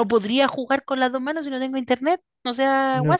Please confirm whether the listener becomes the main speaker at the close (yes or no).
yes